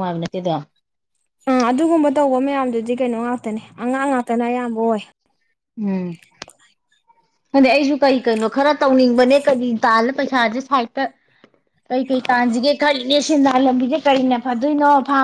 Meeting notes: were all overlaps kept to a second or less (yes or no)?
yes